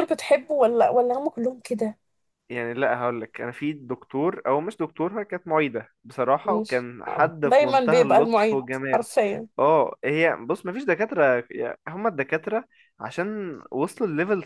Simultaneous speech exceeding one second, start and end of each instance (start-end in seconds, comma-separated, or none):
6.5-9.1